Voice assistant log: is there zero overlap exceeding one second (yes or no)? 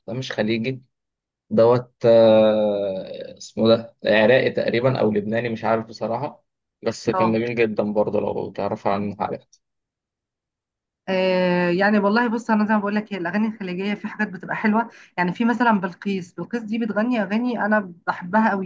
yes